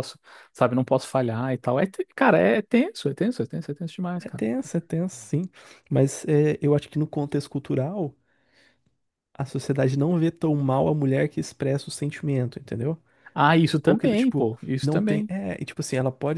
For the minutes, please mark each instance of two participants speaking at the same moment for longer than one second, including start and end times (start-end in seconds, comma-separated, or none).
13.8-15.3